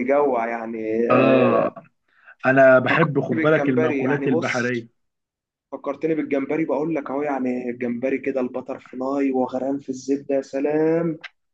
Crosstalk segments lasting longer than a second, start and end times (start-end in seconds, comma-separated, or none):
2.9-4.9